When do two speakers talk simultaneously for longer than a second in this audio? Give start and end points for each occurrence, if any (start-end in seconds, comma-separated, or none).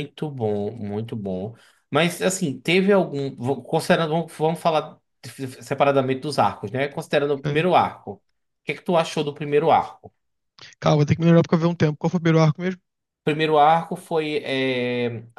none